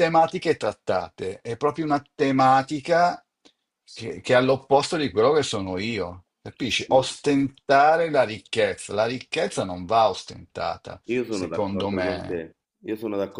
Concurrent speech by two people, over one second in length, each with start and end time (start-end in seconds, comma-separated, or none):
11.0-12.4